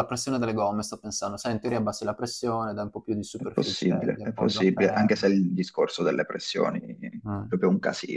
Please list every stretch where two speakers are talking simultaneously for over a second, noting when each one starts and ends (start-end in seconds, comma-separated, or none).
3.3-5.3